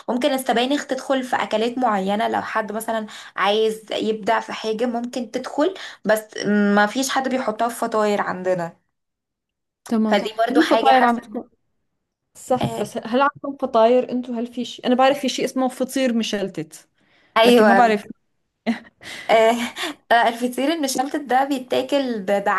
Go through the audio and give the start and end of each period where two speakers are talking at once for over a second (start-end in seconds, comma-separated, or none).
10.1-11.5